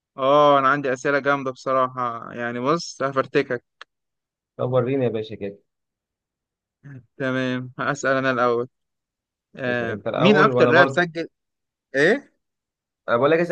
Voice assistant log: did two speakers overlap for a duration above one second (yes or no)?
yes